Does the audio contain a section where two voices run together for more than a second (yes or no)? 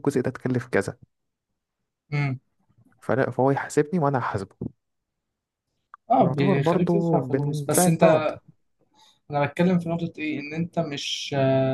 yes